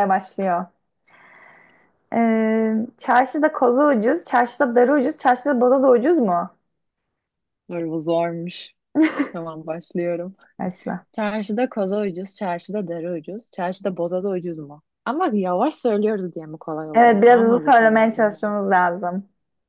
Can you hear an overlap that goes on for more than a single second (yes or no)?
yes